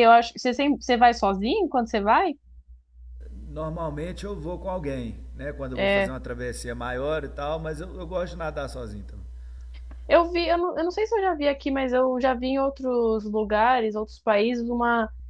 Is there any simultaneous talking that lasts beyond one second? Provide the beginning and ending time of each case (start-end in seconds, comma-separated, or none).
none